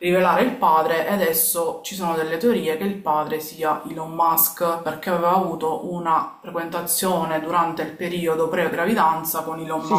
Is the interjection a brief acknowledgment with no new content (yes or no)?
no